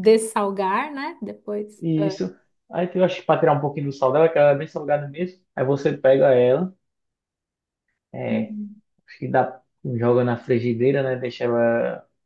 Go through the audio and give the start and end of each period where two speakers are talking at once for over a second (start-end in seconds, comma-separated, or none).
none